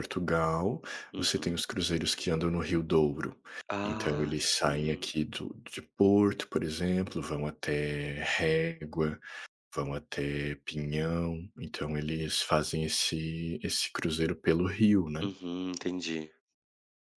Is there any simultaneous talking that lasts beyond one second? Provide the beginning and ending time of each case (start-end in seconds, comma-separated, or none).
3.8-5.1